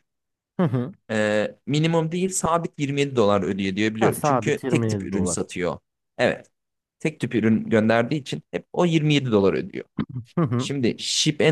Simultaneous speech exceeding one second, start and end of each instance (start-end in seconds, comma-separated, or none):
4.0-5.4